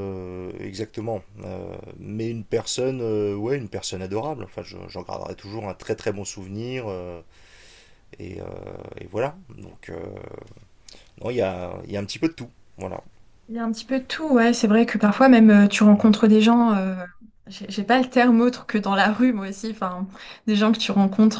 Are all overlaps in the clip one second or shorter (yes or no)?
yes